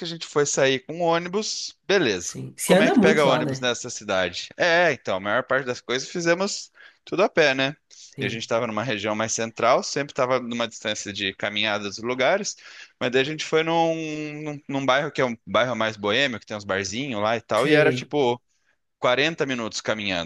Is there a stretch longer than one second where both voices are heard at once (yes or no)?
yes